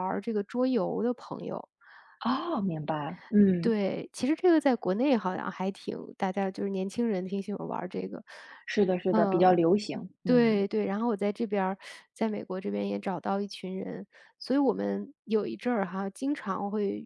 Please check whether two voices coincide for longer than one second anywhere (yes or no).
no